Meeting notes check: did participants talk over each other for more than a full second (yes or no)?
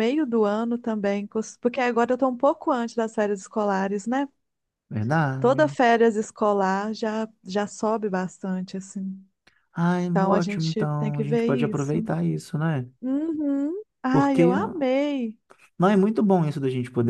yes